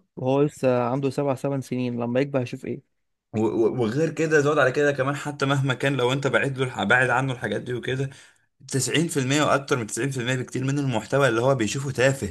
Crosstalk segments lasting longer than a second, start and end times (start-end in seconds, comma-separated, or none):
none